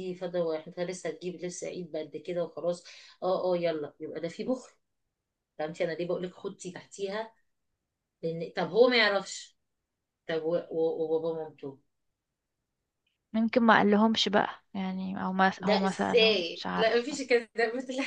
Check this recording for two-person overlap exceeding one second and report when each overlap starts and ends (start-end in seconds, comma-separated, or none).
15.6-17.2